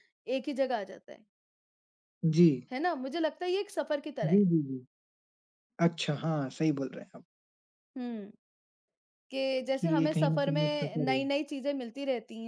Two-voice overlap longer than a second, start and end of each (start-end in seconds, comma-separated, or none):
9.8-11.2